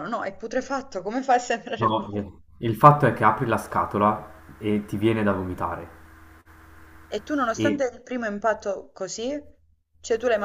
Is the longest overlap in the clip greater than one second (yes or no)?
no